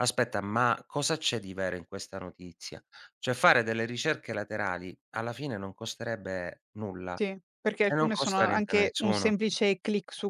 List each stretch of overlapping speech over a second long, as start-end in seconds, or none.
7.8-9.3